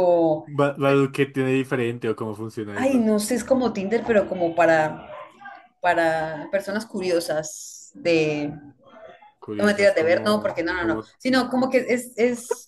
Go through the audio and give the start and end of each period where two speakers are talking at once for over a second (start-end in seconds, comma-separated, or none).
9.6-11.1